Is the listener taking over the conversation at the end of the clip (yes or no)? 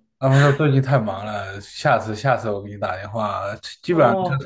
no